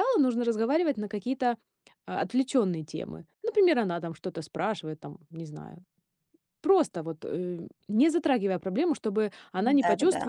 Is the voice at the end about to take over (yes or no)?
no